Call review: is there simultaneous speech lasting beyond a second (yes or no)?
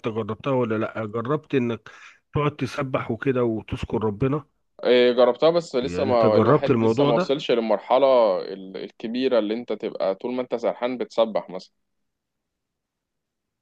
yes